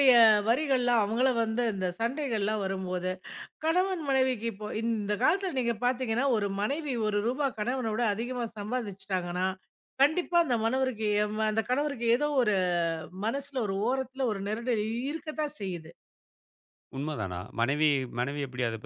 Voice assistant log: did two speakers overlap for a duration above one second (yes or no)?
no